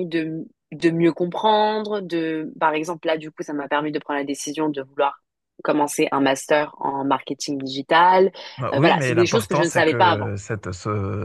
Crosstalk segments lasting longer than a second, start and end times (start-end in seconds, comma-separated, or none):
8.7-10.3